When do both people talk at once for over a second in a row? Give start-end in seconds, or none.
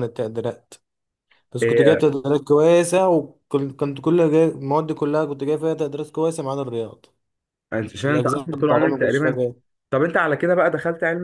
8.0-9.4